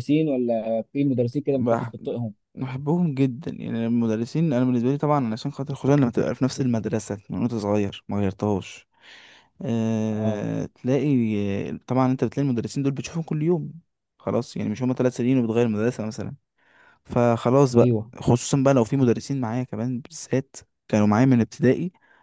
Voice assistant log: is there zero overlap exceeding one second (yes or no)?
yes